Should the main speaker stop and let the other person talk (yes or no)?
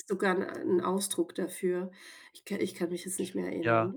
no